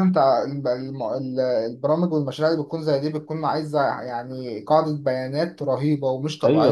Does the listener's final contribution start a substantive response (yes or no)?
no